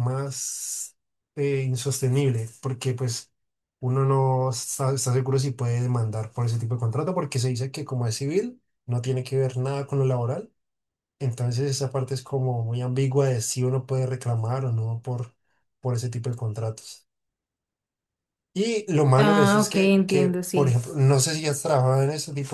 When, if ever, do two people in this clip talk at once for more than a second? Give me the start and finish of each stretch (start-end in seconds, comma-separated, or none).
19.1-20.8